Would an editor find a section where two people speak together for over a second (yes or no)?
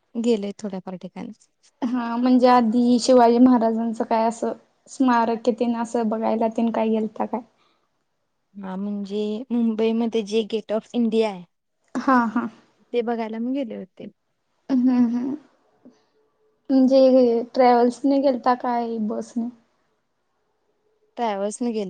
no